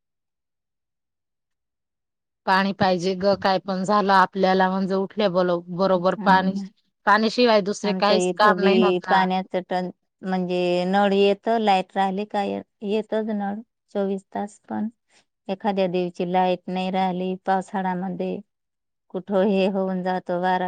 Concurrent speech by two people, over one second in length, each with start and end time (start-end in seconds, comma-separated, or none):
7.9-9.2